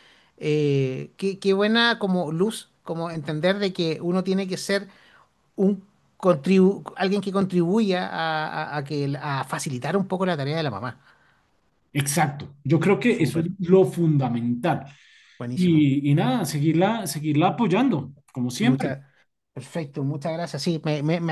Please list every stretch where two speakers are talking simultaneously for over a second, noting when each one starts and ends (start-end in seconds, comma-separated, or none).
none